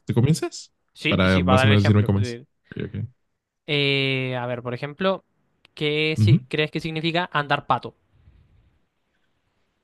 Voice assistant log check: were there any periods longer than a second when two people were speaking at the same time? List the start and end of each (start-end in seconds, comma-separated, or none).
1.1-2.4